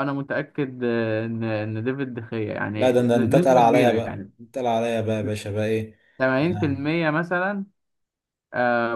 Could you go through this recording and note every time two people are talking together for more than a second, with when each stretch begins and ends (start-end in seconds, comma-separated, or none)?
2.8-4.3